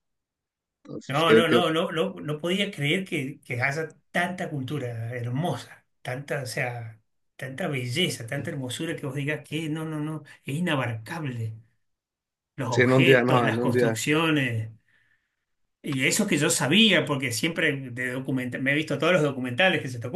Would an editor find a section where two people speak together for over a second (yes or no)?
yes